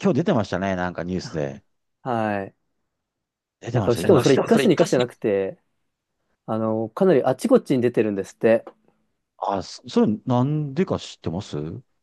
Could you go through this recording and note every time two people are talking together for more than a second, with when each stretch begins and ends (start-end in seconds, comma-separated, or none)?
3.7-5.0